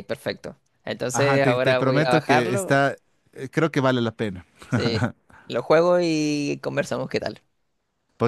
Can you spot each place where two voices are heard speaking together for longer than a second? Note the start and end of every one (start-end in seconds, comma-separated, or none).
1.1-2.8